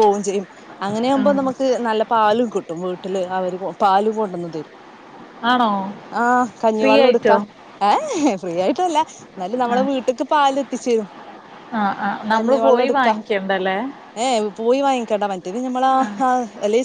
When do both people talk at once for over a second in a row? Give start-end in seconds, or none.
none